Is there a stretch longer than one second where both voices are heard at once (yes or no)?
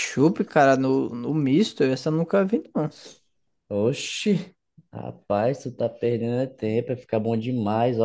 no